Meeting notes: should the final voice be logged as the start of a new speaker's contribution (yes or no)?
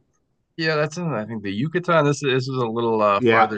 no